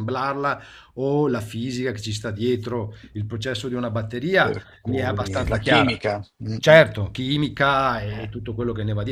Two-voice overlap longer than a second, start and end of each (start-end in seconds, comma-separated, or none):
4.4-6.0